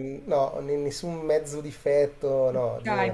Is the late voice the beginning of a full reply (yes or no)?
yes